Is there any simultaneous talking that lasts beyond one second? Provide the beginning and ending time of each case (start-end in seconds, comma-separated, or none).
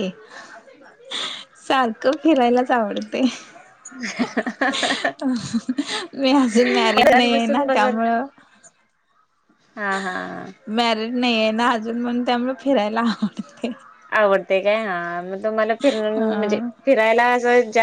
6.5-7.9